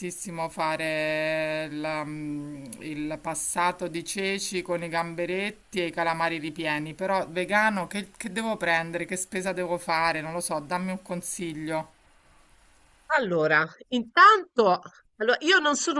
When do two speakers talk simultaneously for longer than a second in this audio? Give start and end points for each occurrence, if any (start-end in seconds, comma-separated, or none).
none